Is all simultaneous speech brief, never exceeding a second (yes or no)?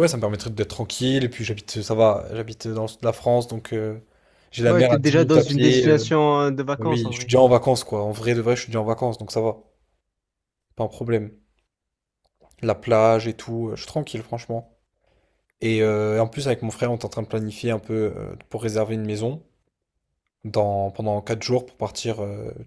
no